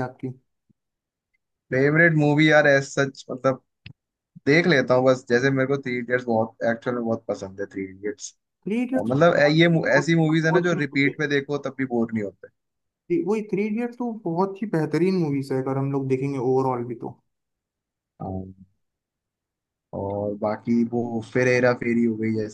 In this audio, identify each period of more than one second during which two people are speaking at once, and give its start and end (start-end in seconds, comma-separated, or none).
9.0-11.2